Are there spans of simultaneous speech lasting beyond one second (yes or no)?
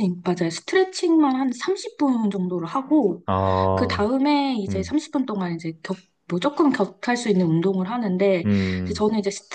no